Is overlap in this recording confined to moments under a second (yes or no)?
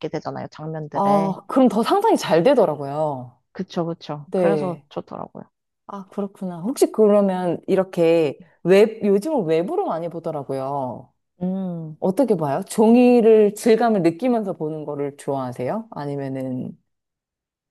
yes